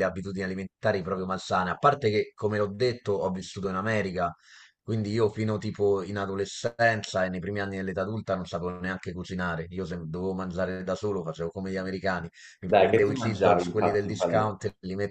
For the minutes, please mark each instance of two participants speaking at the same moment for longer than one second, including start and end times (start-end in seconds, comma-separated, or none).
12.7-14.5